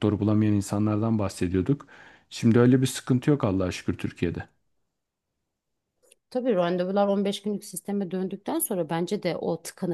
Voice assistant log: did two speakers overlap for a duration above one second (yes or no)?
no